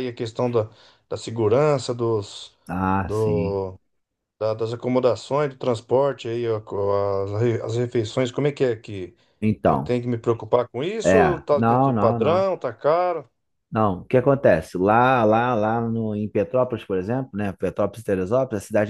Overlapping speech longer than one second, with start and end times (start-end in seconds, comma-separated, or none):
11.0-12.5